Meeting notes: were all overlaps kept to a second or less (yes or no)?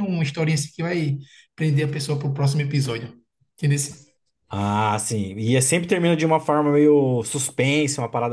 yes